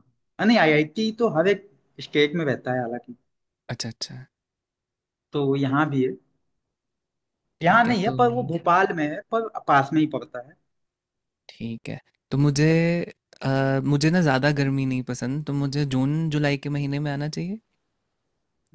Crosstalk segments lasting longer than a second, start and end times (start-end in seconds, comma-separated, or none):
none